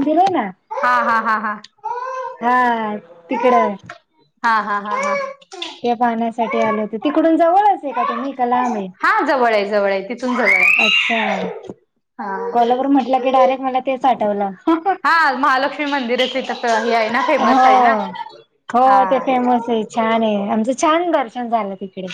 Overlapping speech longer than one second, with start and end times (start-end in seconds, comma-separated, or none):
none